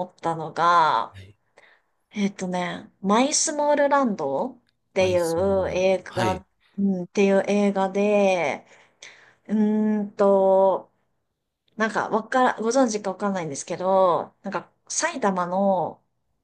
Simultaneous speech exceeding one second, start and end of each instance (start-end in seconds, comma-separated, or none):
5.0-6.4